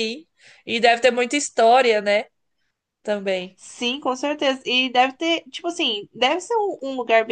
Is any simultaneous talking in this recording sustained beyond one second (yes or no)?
no